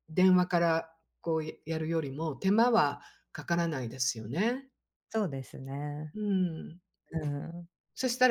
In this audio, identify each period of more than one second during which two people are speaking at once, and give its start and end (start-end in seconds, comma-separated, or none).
none